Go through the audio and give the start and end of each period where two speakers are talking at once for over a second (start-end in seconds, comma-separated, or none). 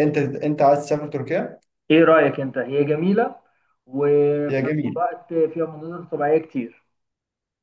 none